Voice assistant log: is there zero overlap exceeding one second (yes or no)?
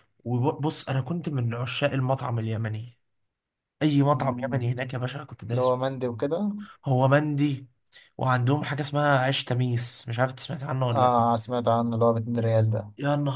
yes